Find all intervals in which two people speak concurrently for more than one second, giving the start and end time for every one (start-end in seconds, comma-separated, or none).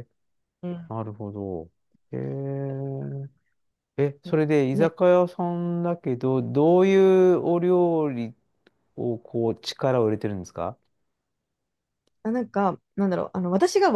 none